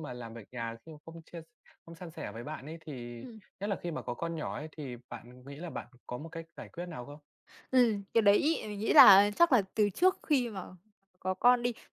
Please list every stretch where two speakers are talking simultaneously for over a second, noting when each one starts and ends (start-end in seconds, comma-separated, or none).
none